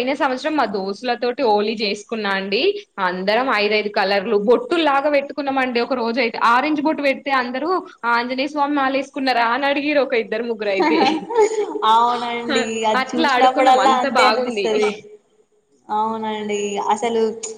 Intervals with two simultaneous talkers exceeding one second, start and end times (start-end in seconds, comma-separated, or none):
13.0-14.7